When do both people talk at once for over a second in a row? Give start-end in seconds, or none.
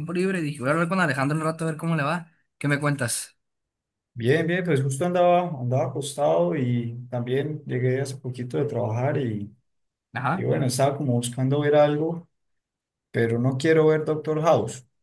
none